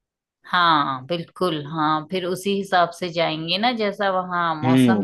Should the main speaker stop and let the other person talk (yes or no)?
yes